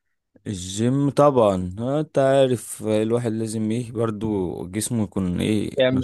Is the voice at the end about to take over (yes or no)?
yes